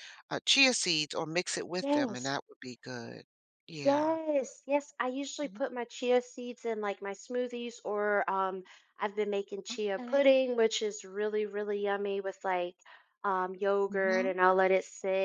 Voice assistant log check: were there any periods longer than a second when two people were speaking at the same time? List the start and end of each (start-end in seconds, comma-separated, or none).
none